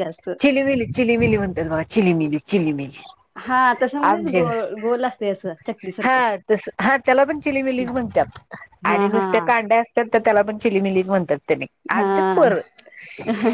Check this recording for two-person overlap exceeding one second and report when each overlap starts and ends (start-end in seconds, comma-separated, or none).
none